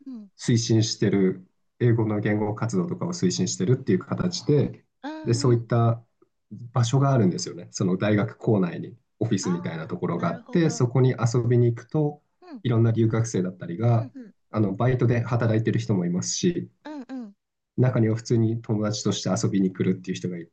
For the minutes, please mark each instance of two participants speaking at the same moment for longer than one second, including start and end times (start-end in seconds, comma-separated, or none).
9.4-10.8